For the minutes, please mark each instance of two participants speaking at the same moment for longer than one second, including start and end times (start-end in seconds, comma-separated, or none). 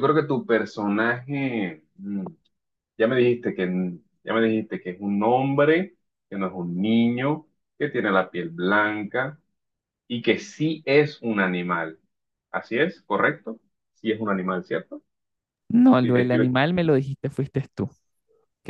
none